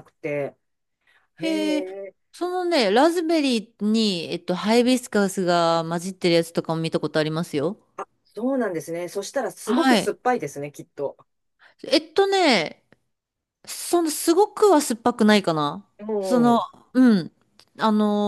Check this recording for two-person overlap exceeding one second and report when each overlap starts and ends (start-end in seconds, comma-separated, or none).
none